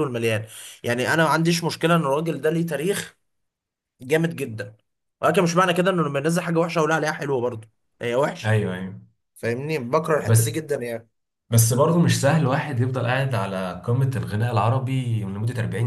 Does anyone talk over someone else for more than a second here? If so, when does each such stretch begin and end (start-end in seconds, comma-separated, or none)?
none